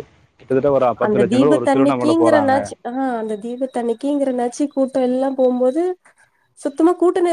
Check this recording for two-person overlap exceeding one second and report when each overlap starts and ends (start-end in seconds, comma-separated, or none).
1.1-2.6